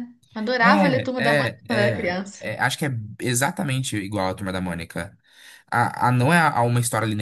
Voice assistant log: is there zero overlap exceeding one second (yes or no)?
no